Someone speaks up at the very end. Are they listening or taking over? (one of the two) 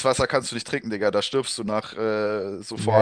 taking over